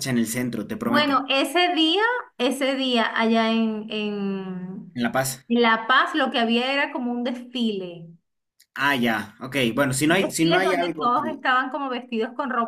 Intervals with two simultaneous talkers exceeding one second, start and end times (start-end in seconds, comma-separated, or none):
10.1-11.4